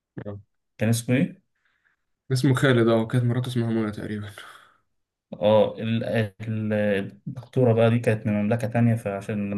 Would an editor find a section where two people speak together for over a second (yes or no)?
no